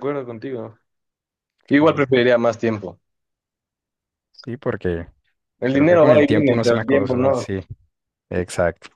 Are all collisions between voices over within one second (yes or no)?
no